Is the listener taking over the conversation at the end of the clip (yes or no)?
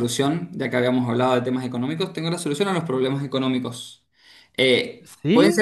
no